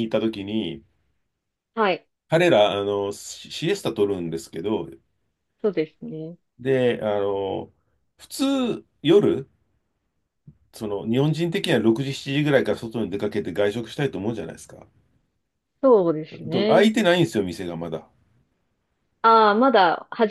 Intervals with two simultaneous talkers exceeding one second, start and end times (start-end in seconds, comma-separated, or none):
none